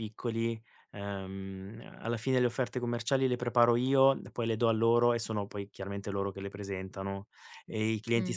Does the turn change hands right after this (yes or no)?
no